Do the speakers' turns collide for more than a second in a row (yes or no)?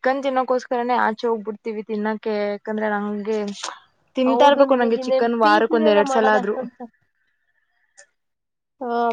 yes